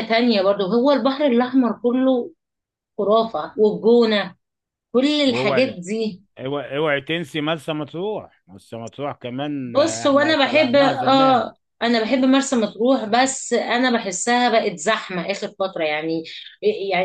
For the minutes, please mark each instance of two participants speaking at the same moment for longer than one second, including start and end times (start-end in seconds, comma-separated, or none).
9.6-11.5